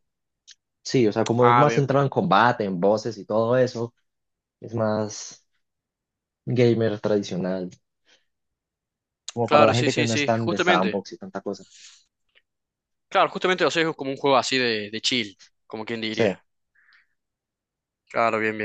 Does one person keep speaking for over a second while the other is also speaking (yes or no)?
yes